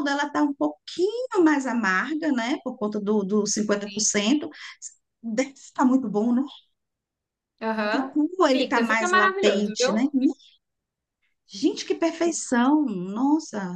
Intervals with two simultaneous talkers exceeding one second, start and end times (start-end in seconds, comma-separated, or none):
7.8-10.1